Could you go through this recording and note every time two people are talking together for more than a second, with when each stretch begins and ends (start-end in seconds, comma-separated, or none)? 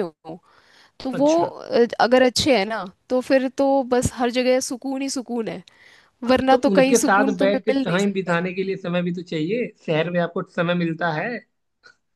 6.5-8.3